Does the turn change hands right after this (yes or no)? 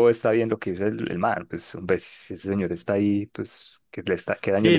yes